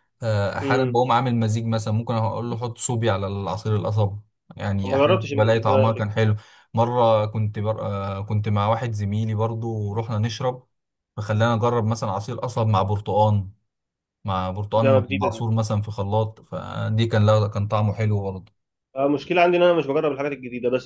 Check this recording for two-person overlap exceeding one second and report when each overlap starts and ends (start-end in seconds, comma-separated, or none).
4.8-6.2